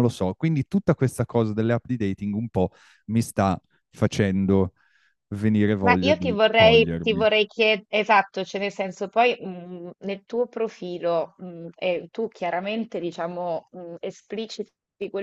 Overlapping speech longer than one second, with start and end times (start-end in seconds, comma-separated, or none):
5.8-7.3